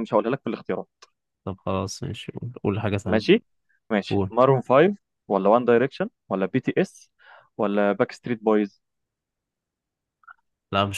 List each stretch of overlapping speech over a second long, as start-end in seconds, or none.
none